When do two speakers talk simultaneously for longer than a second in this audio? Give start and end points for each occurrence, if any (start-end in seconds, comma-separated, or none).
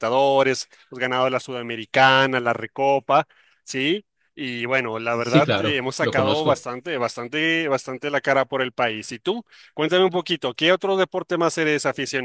5.1-6.7